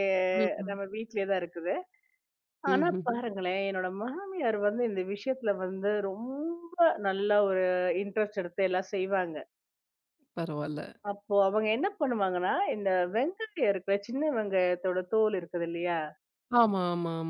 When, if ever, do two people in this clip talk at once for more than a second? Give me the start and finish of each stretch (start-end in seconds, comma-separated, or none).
none